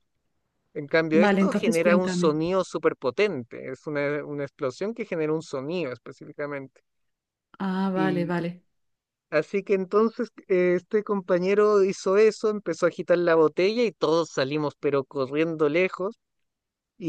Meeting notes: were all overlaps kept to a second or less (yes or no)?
no